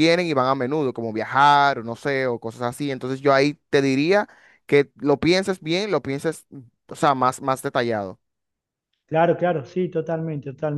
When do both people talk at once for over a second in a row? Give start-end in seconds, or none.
none